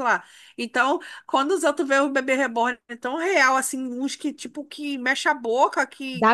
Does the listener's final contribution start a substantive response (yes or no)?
no